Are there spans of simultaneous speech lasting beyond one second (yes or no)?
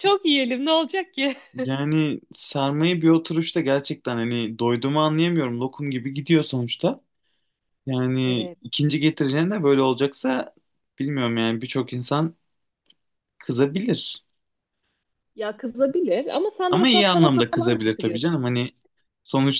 yes